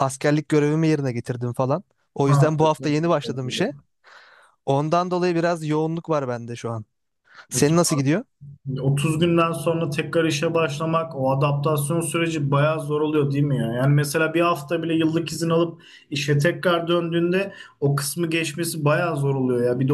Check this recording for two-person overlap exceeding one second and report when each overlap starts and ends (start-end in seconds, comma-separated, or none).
2.2-3.7